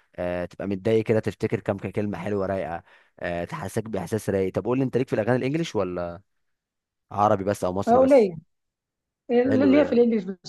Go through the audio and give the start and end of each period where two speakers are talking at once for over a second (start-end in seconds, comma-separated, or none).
none